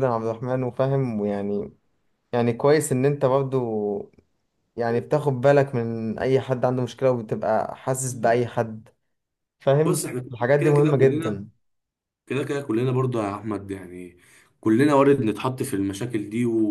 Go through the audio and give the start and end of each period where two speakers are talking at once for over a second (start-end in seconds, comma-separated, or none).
9.8-11.4